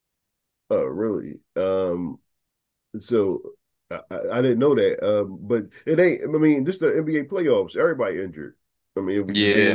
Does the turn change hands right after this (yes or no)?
yes